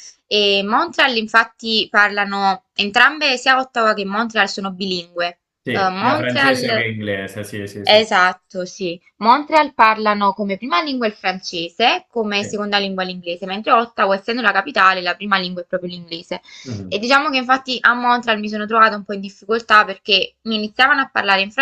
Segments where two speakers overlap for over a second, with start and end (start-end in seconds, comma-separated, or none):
5.6-7.0